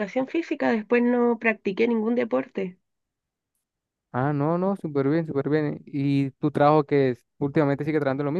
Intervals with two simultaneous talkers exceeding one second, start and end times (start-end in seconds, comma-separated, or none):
none